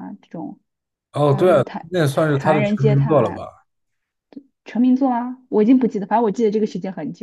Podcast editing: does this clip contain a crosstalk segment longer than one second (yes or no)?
yes